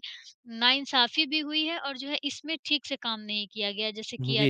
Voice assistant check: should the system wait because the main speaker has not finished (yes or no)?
no